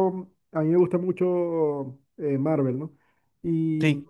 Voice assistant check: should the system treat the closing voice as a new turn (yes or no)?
no